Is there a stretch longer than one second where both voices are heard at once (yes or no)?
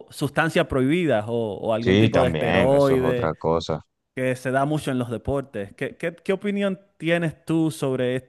yes